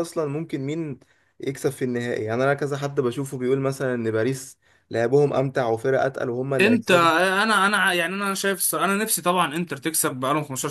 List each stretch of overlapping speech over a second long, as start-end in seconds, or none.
none